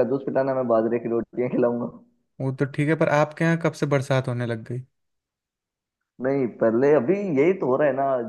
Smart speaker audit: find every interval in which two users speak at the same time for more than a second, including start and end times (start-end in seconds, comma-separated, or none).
none